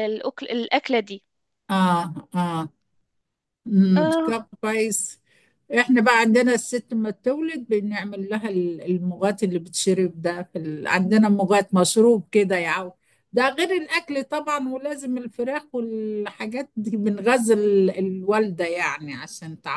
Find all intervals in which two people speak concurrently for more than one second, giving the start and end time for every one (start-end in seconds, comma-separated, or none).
none